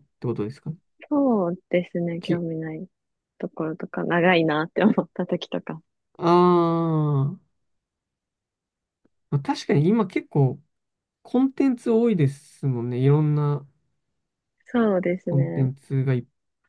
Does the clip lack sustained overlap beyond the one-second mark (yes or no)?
yes